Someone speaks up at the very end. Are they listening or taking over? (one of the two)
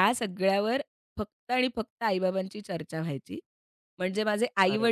listening